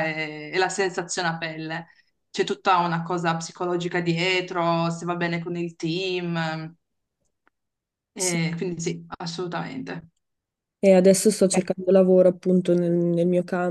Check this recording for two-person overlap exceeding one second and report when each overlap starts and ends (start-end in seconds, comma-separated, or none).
none